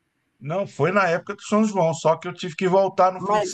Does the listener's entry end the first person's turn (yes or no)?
no